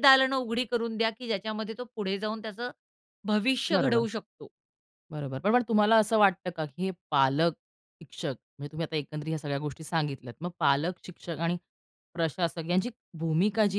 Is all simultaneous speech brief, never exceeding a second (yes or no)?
yes